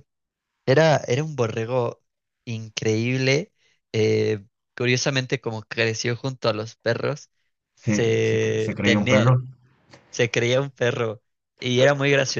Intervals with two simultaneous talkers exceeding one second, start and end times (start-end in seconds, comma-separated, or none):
7.8-9.4